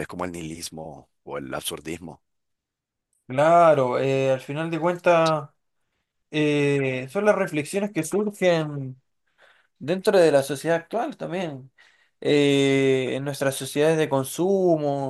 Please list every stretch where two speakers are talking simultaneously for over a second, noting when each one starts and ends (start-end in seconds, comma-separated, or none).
none